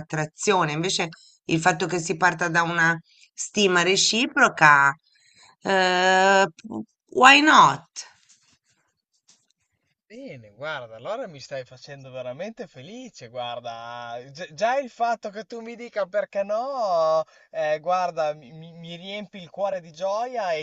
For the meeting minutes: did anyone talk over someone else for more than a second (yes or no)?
no